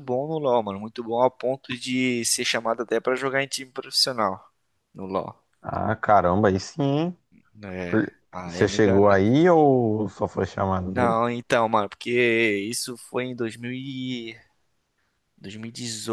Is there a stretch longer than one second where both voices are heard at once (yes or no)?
yes